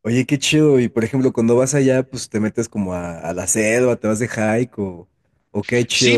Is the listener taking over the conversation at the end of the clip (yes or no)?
yes